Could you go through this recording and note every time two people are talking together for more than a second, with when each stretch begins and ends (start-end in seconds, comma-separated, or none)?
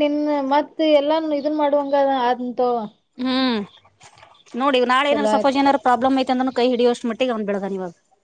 none